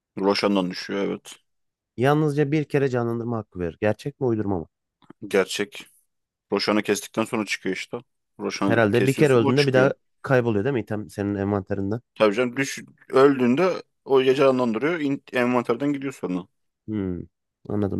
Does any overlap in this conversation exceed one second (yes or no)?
yes